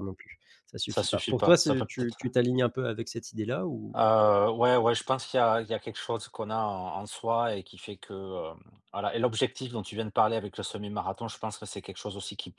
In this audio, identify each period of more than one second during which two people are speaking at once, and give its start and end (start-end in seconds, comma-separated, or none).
0.9-2.2